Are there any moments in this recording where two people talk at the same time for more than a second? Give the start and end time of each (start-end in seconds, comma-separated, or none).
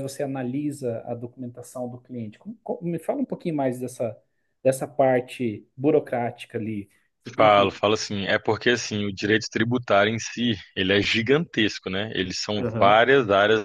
none